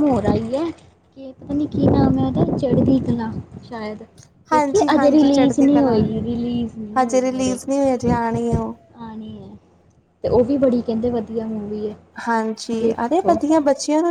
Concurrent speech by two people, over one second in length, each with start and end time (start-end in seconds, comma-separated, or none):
4.5-6.0